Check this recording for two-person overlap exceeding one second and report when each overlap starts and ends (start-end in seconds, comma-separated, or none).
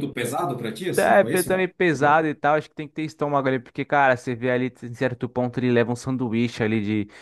0.9-2.2